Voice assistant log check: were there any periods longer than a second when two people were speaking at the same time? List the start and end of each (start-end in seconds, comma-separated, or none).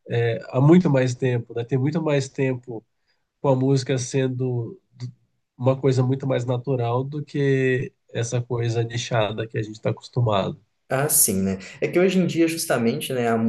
none